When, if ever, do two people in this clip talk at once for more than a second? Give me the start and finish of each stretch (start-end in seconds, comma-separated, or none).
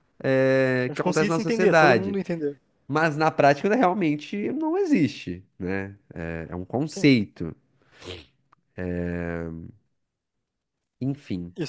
0.9-2.2